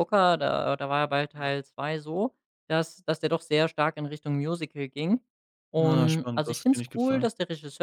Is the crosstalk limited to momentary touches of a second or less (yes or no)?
no